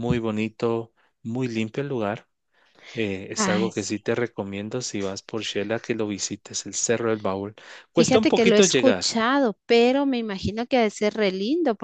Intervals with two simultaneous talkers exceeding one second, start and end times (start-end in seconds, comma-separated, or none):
8.0-9.2